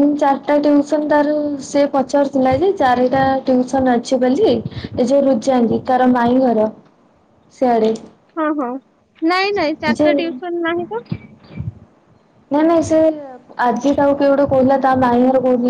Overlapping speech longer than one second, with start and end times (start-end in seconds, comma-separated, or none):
none